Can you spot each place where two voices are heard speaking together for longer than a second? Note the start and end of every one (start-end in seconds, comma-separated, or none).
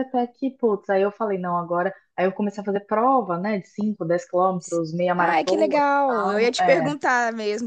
5.2-6.9